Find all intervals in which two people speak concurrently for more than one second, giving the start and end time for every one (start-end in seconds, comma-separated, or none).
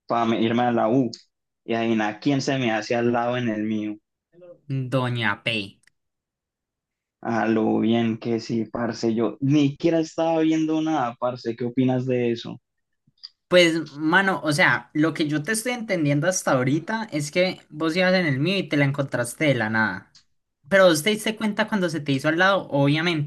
none